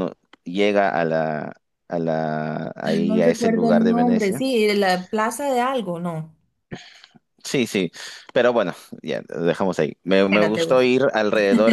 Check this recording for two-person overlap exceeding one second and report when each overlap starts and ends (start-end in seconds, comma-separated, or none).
2.9-4.5